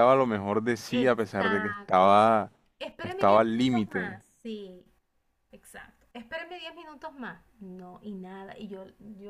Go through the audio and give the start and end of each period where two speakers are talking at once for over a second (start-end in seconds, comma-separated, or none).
0.9-2.1, 3.0-4.2